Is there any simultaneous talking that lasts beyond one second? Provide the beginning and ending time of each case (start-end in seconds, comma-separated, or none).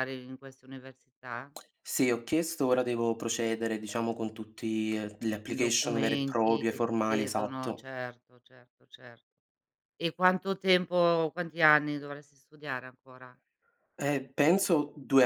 5.5-7.9